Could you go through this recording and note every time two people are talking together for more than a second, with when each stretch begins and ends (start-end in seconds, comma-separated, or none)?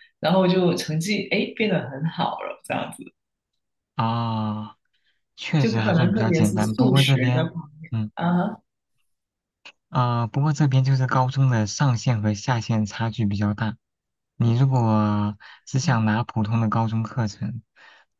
5.6-7.5